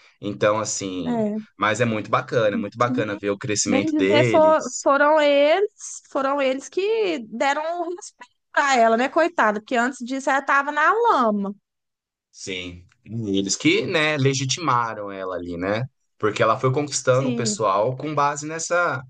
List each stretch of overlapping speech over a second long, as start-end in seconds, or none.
3.7-4.9